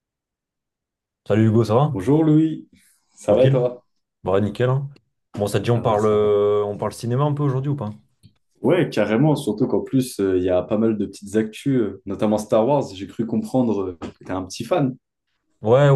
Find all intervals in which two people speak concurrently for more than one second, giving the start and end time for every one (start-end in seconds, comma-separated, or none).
none